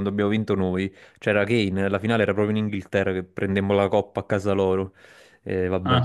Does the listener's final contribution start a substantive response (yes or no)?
yes